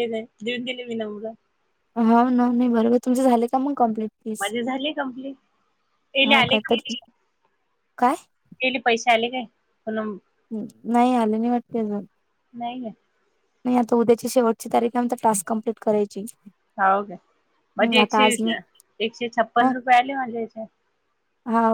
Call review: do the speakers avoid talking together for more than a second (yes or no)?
yes